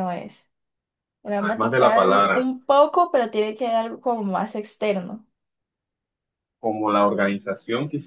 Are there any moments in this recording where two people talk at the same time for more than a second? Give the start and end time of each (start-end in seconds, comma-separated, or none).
1.2-2.5